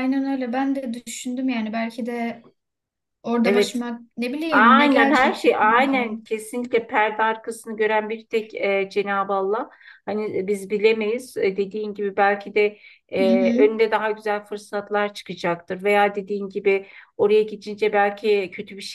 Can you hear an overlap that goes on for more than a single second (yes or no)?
yes